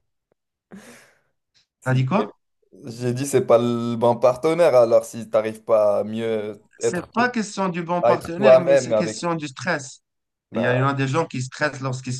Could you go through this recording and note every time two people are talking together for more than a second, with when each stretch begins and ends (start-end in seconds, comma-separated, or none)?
8.0-9.2